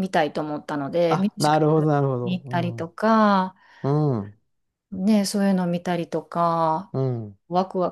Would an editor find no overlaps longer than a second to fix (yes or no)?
no